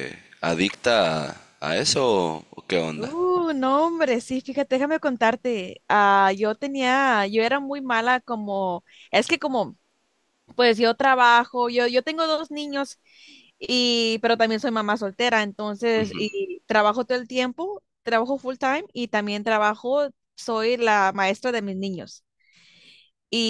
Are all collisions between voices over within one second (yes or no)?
yes